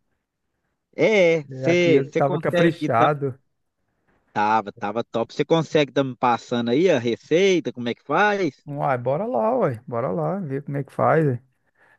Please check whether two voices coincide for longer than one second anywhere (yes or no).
yes